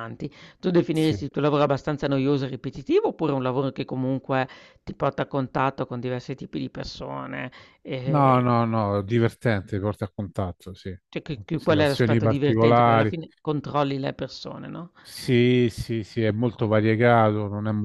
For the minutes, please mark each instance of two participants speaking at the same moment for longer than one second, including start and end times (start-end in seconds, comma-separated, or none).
11.6-13.1